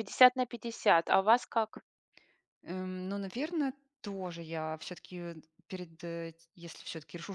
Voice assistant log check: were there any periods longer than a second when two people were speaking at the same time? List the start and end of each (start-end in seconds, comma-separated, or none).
none